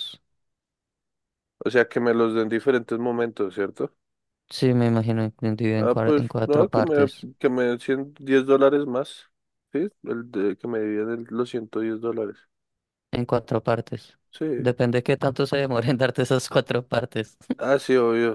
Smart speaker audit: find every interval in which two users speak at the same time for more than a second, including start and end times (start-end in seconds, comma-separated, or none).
5.8-7.3